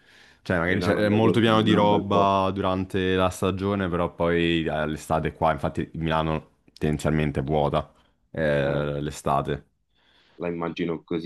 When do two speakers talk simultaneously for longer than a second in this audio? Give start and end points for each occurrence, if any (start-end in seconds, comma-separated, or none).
0.7-2.3